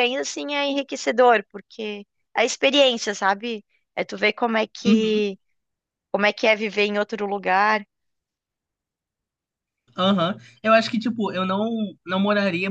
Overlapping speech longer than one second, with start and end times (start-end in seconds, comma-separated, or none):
none